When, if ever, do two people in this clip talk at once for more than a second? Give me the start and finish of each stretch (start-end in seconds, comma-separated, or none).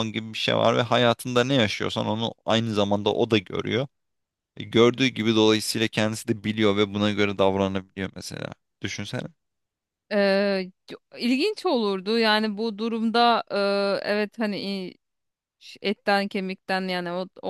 none